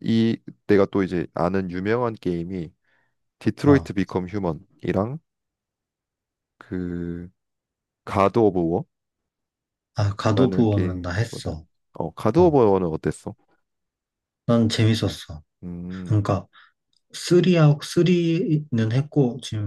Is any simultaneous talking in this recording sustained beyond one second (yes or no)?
yes